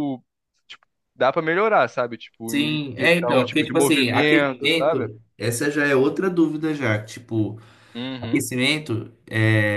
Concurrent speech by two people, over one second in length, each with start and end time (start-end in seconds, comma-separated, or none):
2.5-5.1